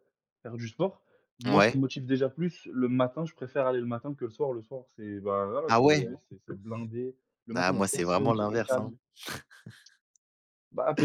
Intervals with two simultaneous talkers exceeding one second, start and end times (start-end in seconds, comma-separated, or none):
7.5-8.9